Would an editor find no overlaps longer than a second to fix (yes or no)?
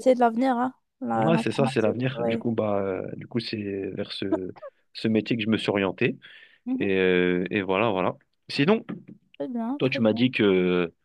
no